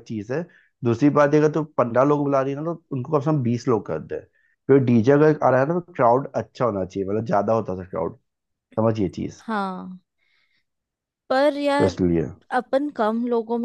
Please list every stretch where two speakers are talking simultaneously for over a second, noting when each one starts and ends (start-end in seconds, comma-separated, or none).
none